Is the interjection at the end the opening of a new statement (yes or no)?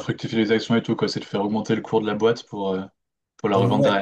yes